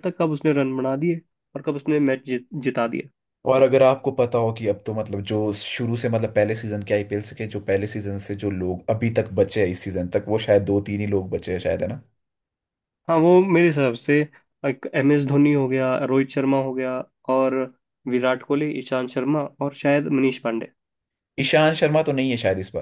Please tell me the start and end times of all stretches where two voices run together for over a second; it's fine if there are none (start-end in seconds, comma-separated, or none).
none